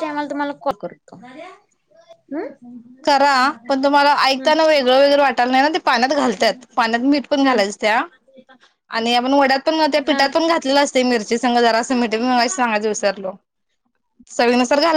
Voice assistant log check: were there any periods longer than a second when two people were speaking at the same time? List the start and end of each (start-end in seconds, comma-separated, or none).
none